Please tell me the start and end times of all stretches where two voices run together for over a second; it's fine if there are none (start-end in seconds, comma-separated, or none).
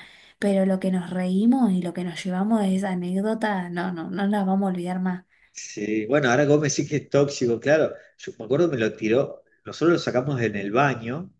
none